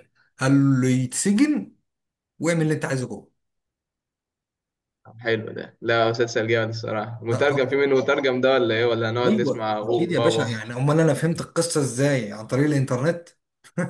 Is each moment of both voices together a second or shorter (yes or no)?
no